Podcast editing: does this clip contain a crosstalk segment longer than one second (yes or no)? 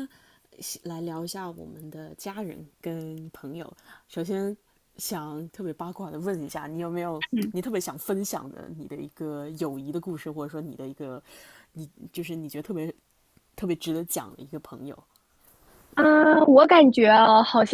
no